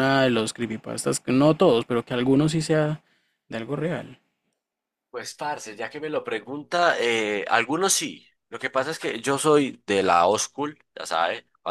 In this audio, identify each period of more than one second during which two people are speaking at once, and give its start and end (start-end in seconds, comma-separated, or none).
none